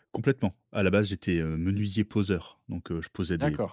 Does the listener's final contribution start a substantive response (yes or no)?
no